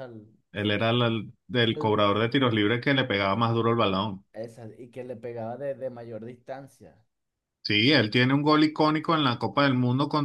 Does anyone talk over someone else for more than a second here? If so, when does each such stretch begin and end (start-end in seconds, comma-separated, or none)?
none